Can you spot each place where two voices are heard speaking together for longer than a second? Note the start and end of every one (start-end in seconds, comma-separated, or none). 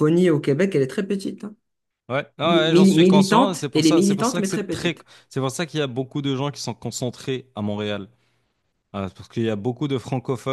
2.4-5.1